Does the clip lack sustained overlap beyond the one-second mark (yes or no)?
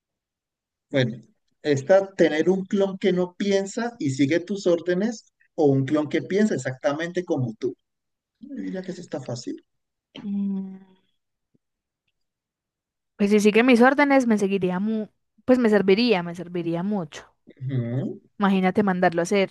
yes